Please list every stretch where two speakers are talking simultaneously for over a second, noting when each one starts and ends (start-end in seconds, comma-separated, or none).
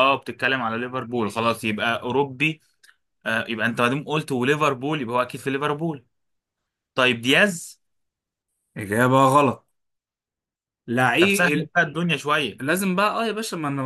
none